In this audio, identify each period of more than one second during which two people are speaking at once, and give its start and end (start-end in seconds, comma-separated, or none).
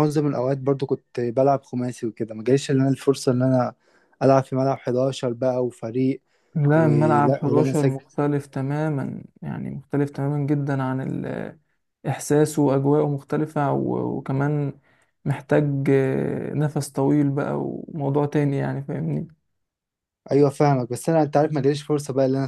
6.7-8.0